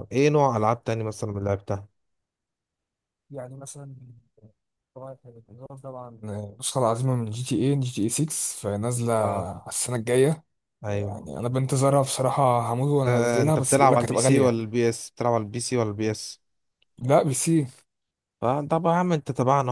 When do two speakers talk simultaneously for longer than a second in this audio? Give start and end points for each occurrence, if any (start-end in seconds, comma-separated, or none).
13.1-14.6